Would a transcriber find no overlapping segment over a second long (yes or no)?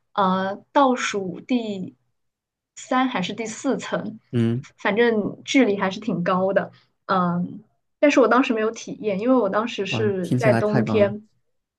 no